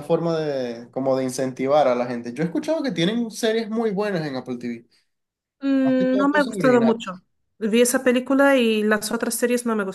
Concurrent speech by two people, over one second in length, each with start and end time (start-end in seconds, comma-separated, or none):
5.8-7.2